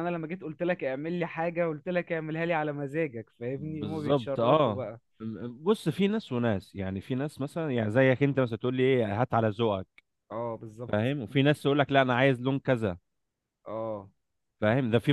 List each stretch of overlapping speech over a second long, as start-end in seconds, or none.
3.6-4.9